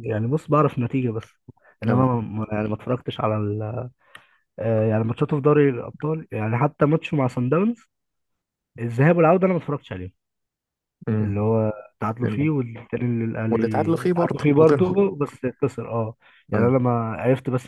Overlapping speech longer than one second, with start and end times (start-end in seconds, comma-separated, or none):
13.5-15.0